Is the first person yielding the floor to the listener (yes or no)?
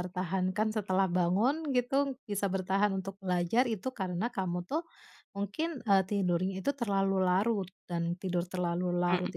no